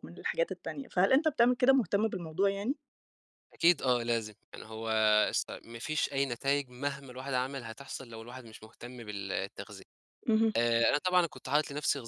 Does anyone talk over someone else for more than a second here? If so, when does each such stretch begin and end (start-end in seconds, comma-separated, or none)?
none